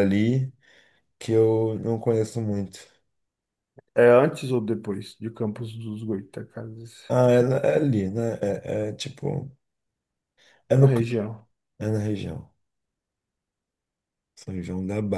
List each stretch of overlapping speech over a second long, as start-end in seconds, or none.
none